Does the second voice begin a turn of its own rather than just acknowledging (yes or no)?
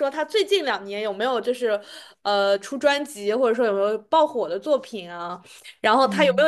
no